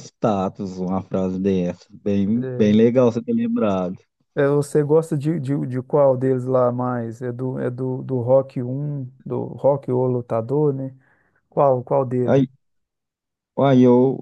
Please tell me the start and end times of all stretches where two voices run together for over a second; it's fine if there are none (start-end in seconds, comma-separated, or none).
none